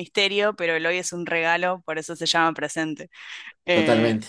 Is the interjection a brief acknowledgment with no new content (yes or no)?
yes